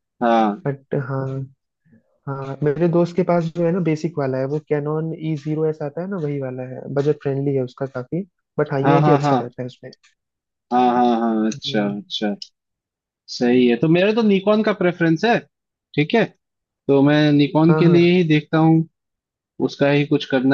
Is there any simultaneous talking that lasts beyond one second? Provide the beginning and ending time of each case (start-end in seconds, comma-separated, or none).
none